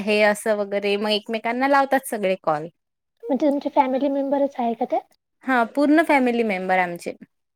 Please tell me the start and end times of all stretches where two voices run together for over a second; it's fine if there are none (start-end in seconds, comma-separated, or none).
none